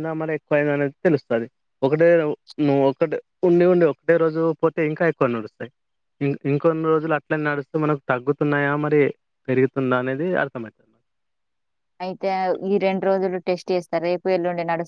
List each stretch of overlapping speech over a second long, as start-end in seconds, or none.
none